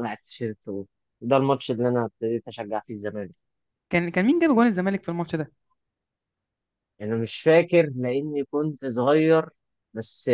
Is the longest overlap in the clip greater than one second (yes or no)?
no